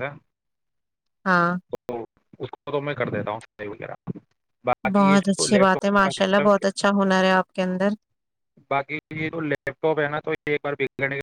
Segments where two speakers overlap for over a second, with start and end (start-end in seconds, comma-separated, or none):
5.0-6.7